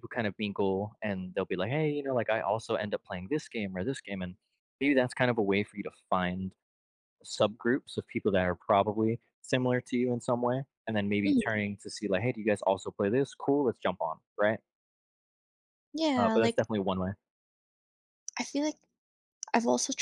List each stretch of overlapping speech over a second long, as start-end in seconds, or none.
none